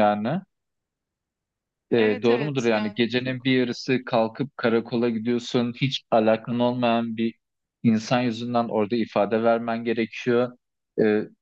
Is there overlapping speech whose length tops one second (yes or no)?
yes